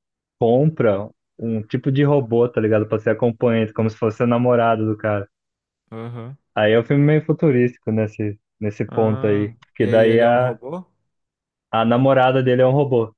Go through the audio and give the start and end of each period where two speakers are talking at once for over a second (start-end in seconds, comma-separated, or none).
8.9-10.6